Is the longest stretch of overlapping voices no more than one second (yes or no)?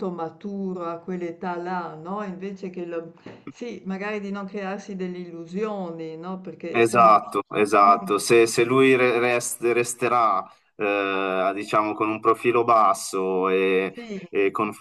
yes